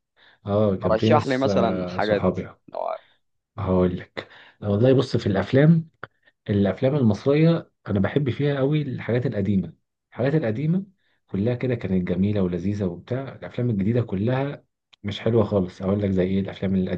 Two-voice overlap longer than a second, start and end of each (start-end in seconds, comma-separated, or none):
0.9-2.4